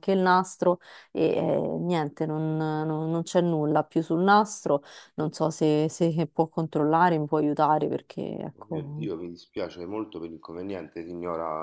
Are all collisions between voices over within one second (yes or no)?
yes